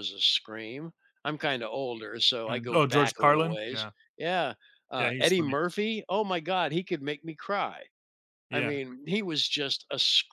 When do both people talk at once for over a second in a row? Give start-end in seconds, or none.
2.5-3.9